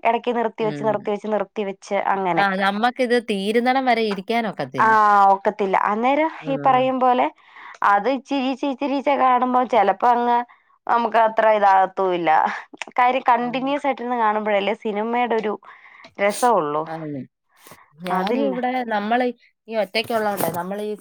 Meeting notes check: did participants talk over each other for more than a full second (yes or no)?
no